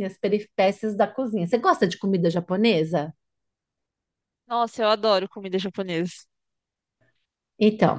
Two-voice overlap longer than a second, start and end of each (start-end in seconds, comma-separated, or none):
none